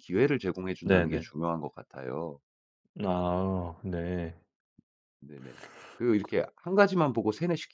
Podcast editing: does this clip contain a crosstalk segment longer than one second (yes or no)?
no